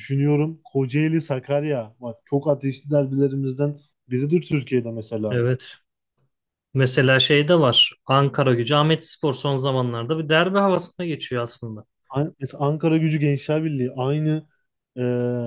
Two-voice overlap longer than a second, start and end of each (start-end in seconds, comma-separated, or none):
none